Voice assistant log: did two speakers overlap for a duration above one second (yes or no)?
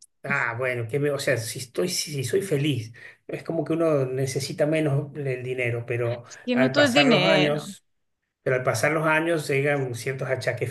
yes